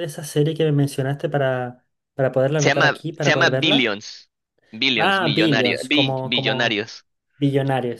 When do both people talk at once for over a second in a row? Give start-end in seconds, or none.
2.6-4.0, 5.0-6.9